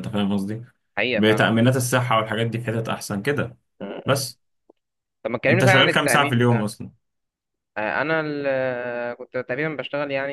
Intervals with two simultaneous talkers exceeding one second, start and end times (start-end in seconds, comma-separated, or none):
5.5-6.7